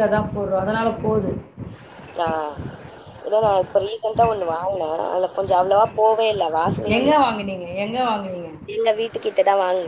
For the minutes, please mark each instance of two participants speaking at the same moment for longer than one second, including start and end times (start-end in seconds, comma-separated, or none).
none